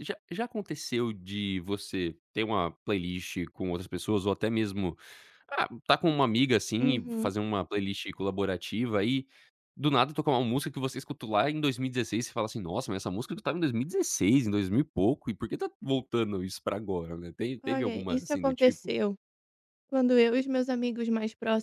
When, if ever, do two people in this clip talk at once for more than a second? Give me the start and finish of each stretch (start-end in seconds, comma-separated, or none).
17.6-18.9